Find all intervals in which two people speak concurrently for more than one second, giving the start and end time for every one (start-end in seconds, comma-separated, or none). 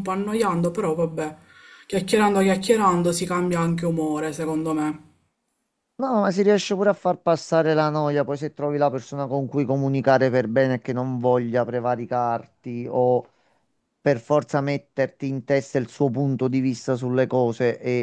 none